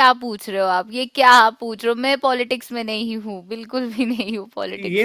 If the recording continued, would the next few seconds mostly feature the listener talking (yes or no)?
yes